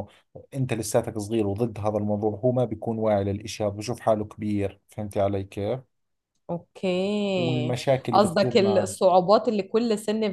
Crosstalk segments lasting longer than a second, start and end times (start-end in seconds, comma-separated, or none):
7.3-9.0